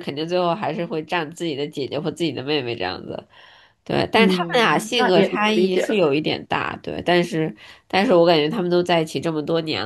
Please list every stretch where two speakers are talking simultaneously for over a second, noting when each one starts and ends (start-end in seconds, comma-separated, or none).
4.1-6.1